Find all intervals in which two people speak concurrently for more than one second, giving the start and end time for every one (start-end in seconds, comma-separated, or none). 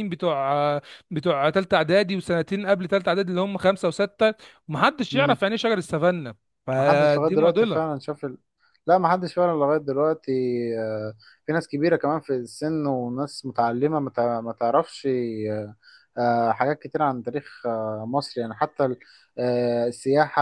6.8-8.0